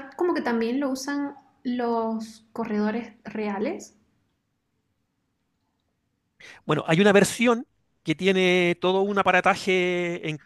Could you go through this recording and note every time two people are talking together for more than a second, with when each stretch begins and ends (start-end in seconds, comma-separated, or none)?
none